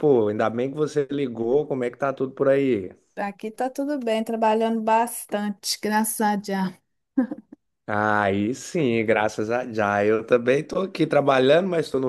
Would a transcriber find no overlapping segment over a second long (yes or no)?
yes